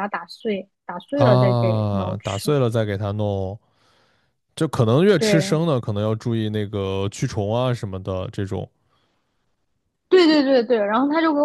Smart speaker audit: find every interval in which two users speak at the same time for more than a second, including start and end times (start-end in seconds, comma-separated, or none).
1.1-2.5